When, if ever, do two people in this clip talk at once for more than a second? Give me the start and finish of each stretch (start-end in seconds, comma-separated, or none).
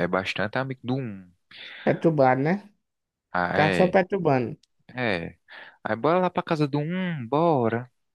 none